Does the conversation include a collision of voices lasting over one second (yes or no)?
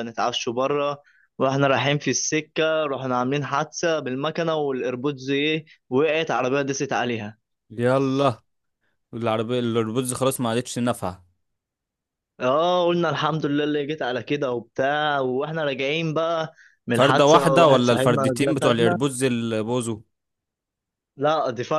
yes